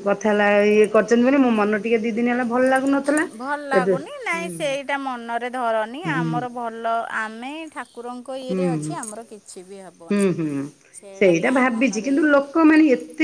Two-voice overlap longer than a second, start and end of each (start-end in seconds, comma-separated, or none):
none